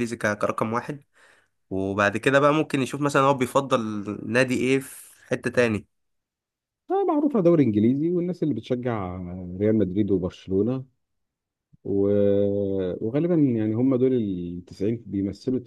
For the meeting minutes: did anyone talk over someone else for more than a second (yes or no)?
no